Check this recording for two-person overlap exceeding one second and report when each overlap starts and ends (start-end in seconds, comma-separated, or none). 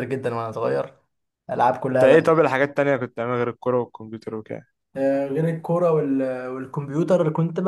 none